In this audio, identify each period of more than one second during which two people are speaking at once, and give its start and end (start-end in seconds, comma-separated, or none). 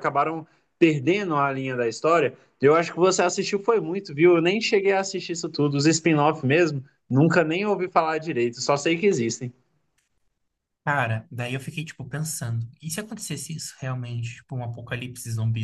none